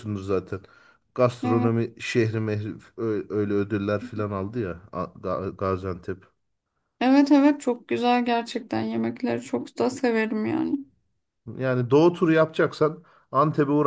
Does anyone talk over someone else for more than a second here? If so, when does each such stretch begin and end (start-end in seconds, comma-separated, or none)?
none